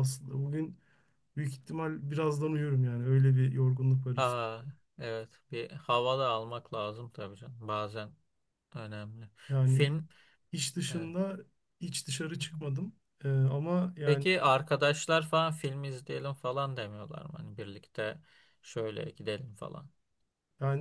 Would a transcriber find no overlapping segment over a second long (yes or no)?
yes